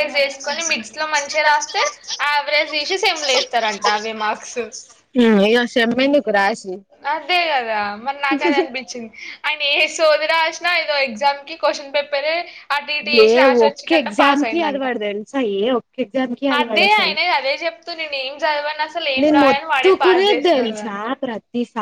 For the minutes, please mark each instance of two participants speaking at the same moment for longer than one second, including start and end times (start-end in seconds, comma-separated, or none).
19.2-20.9